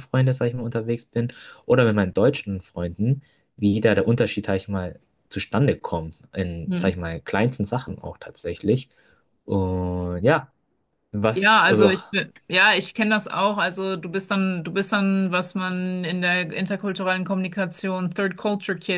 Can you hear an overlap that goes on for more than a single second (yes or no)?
no